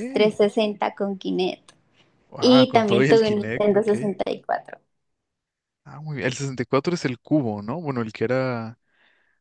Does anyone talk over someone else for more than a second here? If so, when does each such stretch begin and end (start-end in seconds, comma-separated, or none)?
2.4-3.9